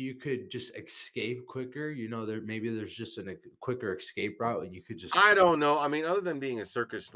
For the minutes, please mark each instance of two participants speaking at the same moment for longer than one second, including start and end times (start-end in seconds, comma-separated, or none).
none